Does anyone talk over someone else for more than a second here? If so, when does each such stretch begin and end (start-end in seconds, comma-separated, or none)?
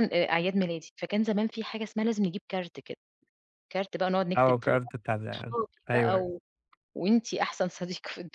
4.4-6.3